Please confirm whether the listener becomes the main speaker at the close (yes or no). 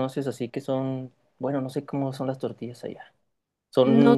yes